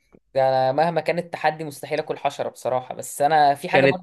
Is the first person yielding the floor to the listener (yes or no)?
no